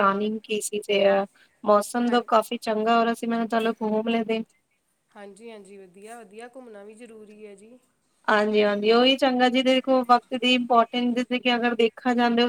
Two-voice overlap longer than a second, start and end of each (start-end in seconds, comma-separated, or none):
none